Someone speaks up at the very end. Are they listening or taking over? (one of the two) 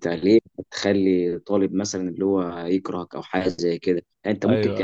listening